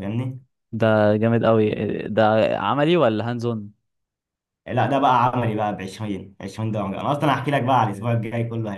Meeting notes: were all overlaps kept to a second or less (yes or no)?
yes